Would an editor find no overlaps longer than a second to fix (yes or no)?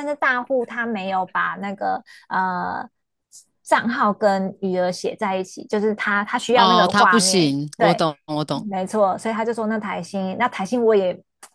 no